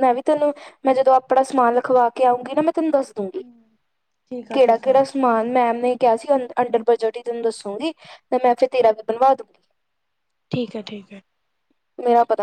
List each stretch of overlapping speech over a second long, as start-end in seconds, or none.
none